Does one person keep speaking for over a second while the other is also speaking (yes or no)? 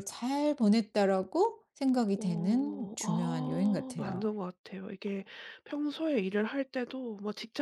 yes